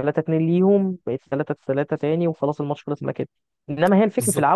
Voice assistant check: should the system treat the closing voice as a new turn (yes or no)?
no